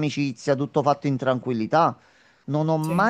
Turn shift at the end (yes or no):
no